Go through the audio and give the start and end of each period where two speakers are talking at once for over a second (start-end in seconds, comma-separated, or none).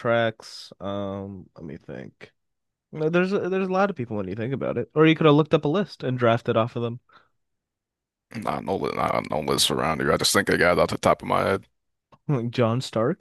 none